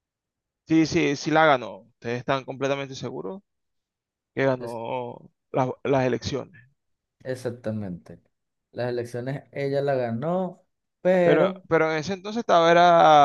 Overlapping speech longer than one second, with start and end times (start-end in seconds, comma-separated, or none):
none